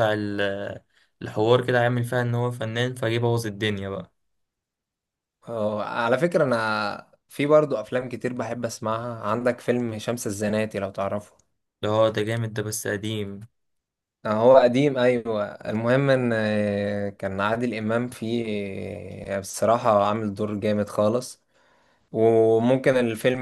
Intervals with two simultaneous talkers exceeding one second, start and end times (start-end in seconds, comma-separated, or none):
none